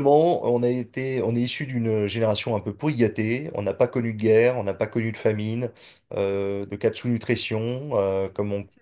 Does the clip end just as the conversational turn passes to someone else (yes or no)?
no